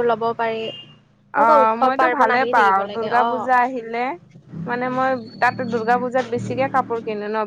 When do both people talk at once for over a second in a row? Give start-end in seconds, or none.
1.4-3.5